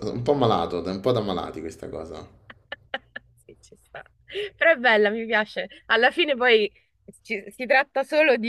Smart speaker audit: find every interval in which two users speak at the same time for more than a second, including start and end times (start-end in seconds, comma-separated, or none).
none